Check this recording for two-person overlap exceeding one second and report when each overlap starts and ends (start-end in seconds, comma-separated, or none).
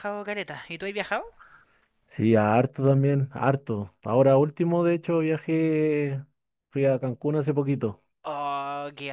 none